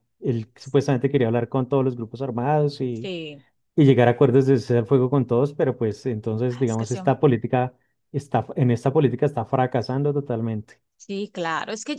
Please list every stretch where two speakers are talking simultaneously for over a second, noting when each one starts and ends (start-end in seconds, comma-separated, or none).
none